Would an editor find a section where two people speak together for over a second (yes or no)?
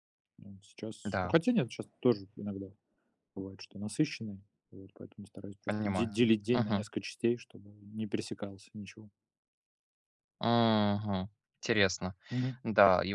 yes